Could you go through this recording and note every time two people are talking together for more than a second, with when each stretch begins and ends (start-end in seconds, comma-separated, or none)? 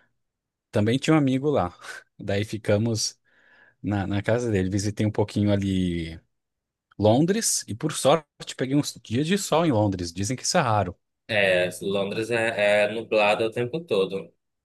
none